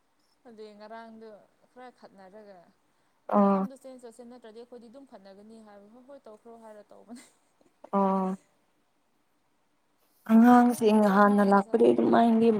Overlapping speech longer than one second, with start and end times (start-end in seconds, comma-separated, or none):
10.3-12.1